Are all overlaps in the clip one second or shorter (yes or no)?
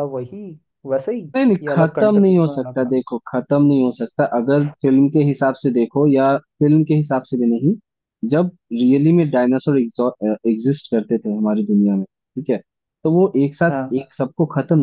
no